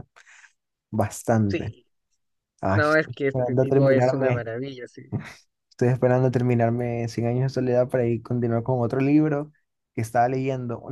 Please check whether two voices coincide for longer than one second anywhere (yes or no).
yes